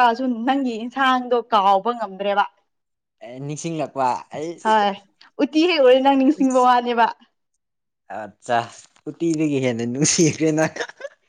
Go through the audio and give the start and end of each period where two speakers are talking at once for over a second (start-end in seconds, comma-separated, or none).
none